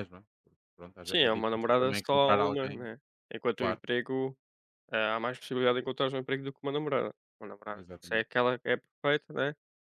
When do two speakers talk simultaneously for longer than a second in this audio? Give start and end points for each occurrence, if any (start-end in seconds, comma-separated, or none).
1.0-2.9